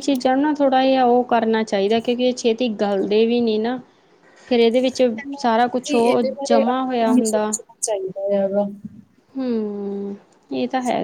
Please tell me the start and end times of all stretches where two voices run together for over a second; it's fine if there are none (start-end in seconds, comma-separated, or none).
5.9-7.5